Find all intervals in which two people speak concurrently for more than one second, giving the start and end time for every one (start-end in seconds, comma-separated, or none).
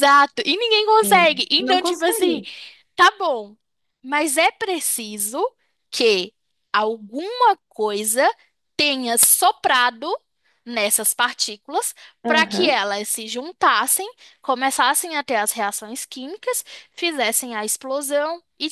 1.0-2.4